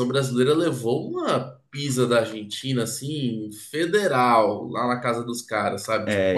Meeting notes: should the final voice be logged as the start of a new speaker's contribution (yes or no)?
yes